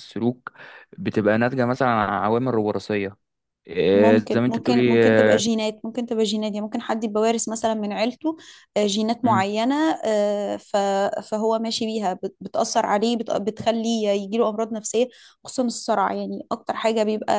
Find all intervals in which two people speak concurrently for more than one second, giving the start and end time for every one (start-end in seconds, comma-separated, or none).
3.9-5.4